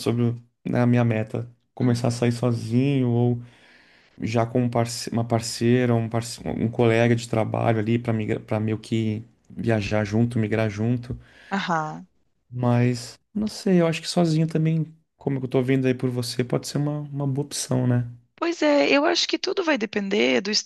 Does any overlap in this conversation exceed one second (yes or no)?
no